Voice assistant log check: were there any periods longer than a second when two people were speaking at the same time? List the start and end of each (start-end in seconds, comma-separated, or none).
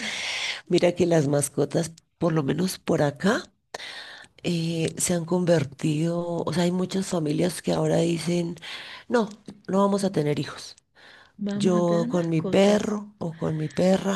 11.5-13.0